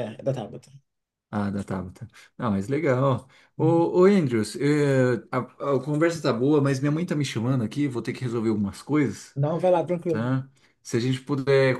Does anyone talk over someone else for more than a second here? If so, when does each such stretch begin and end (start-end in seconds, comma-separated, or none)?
none